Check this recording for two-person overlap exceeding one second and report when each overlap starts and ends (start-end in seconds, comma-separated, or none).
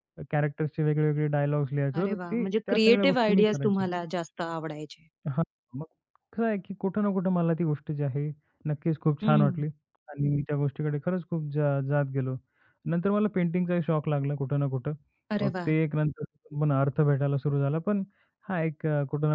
2.0-3.8